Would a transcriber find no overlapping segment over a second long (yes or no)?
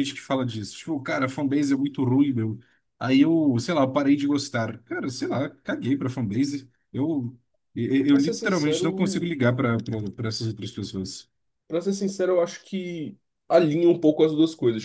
no